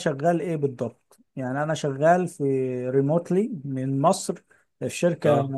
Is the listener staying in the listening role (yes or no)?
yes